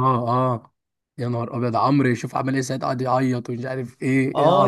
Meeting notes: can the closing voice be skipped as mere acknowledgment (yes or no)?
no